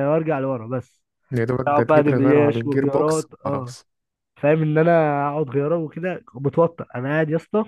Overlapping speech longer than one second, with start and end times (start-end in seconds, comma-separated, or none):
1.7-3.7